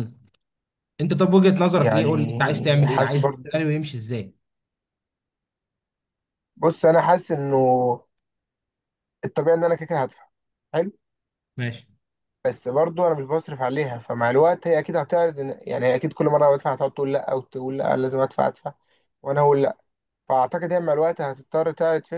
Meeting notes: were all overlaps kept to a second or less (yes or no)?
no